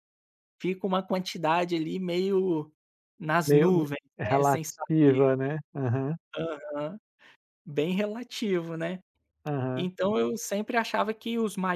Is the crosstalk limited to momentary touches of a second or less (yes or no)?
no